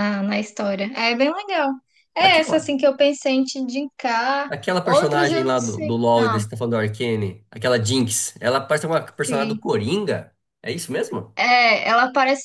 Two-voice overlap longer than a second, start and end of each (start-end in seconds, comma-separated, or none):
4.5-6.4